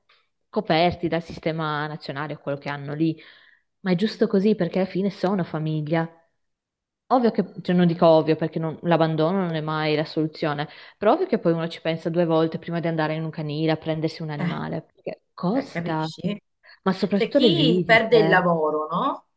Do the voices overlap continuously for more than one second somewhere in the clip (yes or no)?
yes